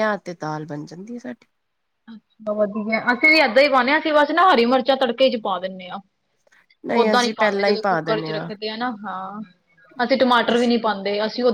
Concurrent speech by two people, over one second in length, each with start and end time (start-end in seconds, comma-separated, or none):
6.9-8.5